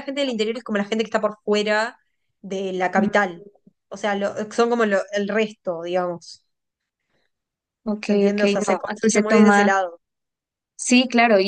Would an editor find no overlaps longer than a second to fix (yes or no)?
no